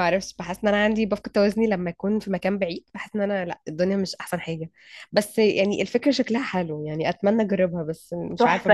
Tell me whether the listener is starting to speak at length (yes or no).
yes